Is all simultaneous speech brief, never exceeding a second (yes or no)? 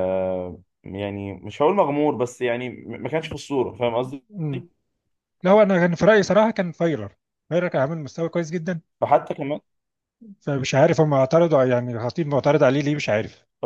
yes